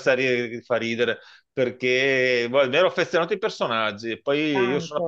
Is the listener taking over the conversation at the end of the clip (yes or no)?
no